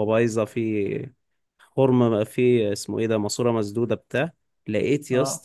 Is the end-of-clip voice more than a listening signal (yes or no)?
no